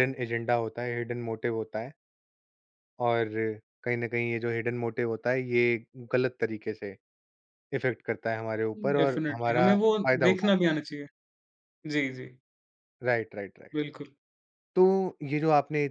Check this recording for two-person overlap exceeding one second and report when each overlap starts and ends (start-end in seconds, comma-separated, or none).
8.8-10.8